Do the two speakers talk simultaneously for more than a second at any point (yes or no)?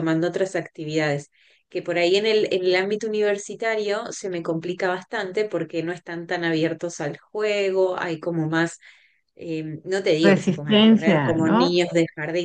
yes